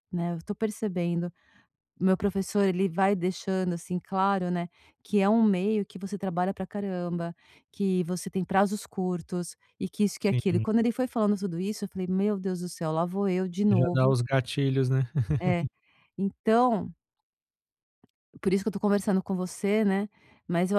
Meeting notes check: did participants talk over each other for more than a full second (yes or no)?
no